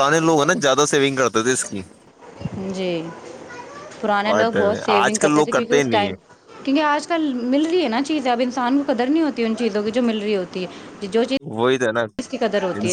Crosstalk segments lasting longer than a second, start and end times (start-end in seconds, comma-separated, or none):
4.3-6.1